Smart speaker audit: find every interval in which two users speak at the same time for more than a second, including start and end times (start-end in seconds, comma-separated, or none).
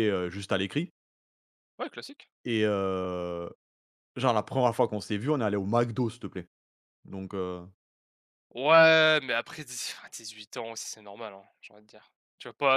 none